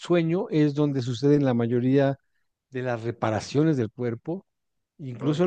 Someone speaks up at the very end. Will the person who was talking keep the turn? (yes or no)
yes